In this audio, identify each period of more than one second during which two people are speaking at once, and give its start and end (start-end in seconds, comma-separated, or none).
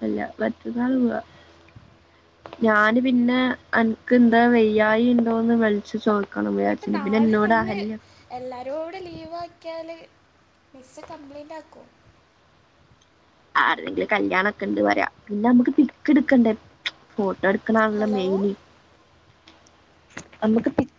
none